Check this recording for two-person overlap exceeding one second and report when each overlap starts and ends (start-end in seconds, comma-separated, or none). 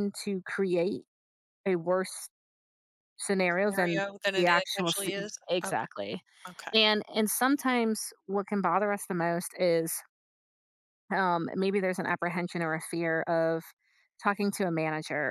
3.5-5.7